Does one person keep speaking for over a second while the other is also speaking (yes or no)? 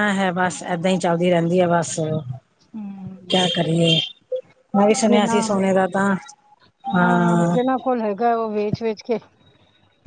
no